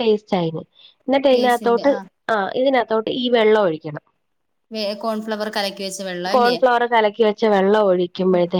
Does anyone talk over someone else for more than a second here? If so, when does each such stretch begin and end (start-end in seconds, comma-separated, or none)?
none